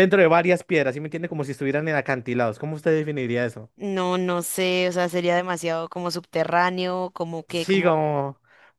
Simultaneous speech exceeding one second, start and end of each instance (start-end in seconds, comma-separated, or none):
none